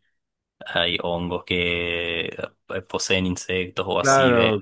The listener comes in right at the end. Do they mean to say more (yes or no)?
yes